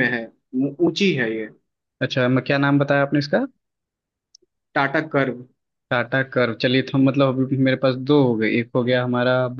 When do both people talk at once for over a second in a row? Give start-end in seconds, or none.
none